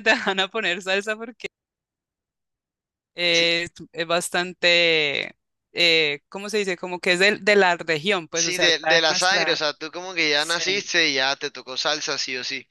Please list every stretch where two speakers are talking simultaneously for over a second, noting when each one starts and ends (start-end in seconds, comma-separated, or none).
8.3-9.6